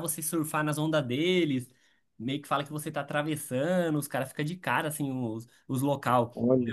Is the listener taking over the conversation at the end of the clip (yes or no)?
no